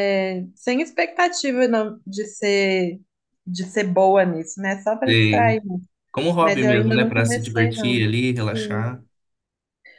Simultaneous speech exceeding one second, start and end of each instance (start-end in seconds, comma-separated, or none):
6.4-8.9